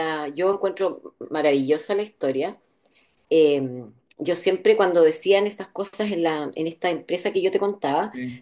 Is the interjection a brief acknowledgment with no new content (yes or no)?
yes